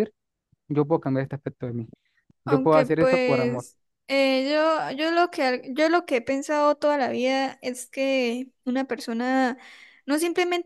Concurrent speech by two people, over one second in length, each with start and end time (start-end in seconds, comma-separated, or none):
2.5-3.6